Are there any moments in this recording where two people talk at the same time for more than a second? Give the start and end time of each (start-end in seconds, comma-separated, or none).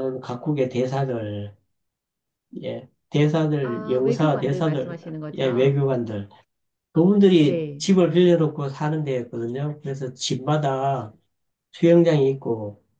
3.6-5.8